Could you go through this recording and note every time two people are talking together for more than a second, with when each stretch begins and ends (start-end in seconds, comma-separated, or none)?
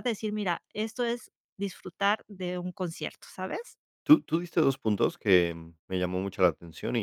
none